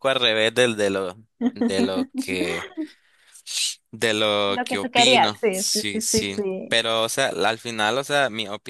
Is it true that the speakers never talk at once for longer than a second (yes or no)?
no